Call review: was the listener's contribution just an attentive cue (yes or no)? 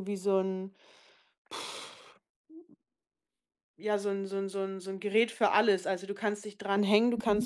yes